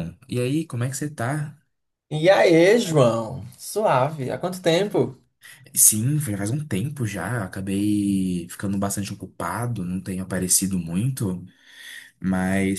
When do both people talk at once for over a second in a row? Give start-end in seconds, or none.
none